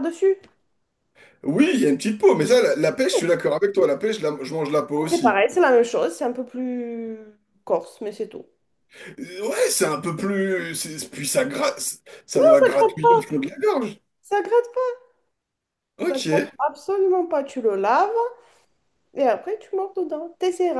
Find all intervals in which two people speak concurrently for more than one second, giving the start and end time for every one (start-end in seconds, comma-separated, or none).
none